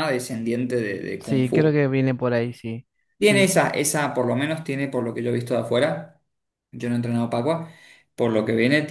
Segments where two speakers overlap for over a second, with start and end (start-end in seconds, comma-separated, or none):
none